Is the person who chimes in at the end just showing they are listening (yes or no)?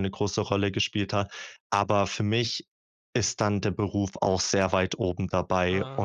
yes